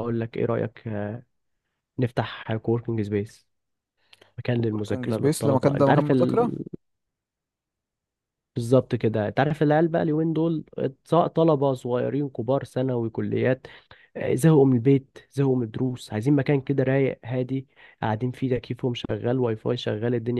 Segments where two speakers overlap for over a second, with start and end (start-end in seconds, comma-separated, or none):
4.5-6.5